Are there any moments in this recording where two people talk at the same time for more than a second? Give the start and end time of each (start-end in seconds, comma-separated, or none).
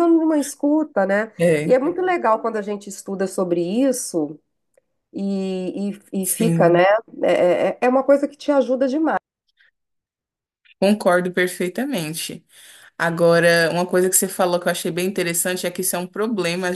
none